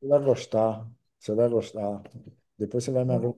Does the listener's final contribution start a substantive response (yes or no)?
no